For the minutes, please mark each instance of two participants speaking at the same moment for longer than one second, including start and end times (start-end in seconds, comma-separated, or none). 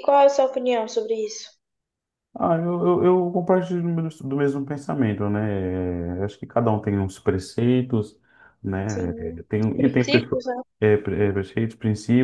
8.9-10.4